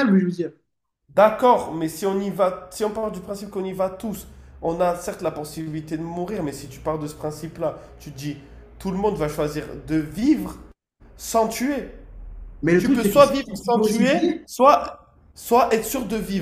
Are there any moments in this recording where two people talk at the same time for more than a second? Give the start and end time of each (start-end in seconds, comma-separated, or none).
12.8-14.3